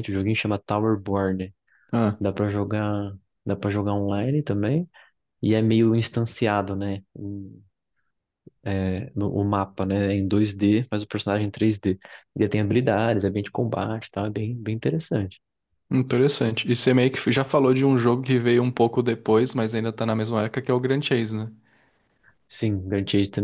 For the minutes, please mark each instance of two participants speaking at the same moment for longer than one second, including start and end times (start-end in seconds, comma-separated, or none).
none